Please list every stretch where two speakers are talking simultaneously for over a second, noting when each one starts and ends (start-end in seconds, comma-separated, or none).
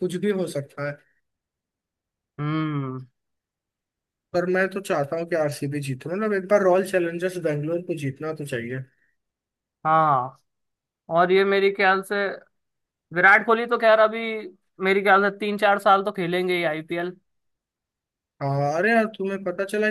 none